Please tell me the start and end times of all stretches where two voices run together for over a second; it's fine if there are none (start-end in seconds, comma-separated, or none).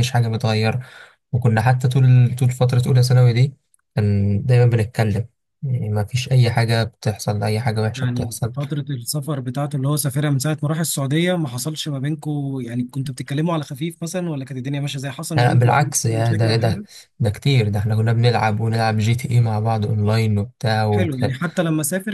15.4-16.8